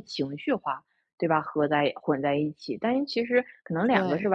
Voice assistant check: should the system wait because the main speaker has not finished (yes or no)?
yes